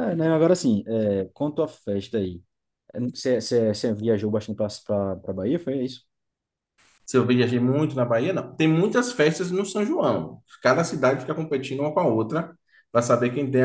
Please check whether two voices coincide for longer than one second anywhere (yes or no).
no